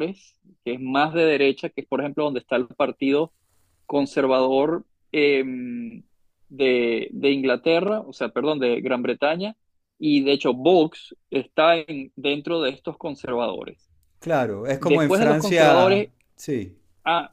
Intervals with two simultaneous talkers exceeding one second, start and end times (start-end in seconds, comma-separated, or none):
14.8-16.1